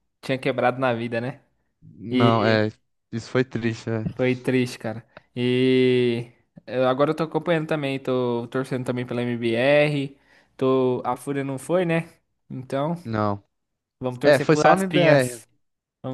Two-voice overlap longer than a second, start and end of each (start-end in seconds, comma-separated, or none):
14.2-15.4